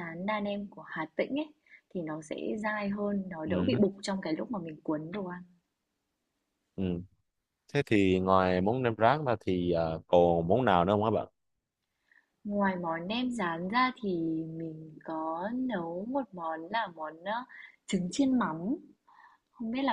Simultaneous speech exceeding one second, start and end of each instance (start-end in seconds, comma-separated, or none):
none